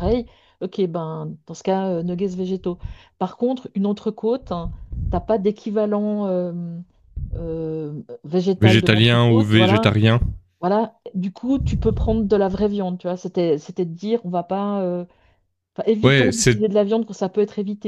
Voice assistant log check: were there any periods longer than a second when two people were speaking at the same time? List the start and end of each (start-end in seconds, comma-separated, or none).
8.6-9.9